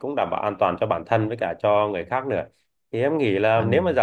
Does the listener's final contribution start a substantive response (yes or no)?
no